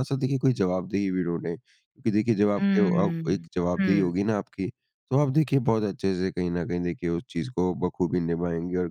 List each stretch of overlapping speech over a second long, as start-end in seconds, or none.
2.6-4.1